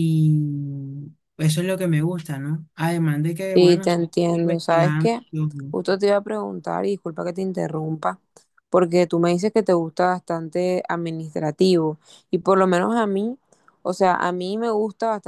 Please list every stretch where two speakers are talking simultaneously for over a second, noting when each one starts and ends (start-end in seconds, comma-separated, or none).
3.5-5.1